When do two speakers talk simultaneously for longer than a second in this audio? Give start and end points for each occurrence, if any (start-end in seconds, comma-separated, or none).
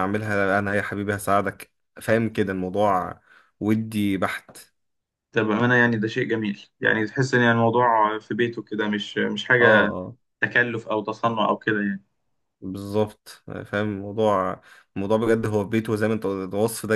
none